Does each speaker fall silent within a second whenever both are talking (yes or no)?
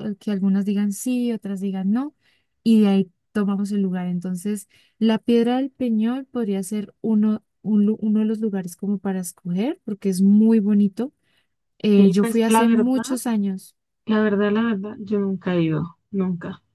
no